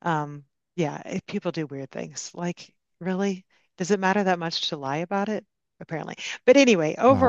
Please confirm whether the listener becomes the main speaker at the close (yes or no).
no